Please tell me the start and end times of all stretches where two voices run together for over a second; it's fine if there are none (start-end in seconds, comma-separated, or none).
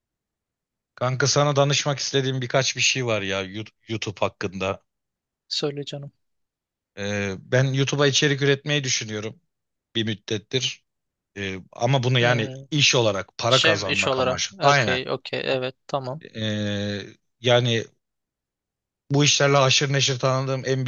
13.5-15.0